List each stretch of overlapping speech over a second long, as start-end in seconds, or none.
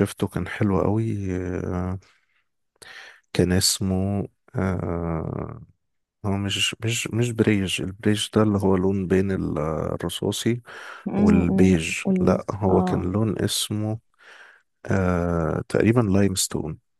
11.2-13.1